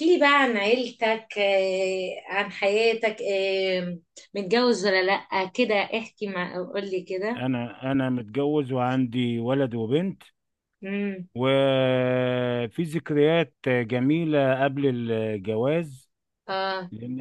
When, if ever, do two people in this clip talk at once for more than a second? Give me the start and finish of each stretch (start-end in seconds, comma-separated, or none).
none